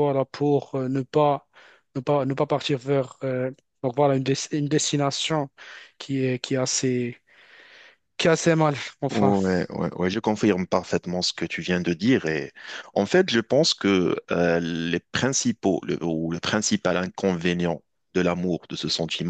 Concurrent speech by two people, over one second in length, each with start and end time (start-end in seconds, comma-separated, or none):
none